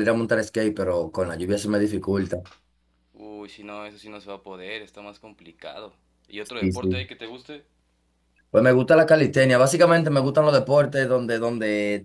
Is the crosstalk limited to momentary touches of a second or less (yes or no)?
yes